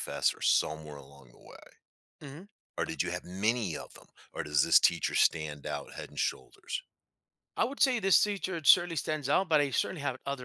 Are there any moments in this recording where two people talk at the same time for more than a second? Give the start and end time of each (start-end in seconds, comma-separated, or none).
none